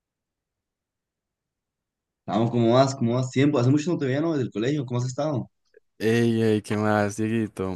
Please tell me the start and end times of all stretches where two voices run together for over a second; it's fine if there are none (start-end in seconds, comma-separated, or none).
none